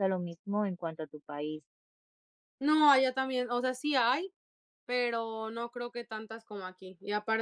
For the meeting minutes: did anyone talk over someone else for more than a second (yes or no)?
no